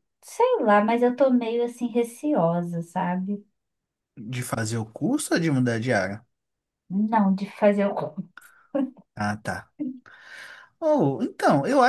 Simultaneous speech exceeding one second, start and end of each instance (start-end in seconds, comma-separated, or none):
none